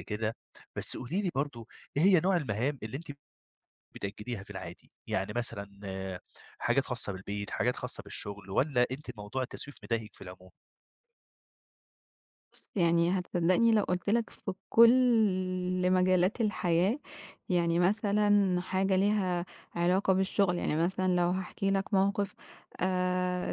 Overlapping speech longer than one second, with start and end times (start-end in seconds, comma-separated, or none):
none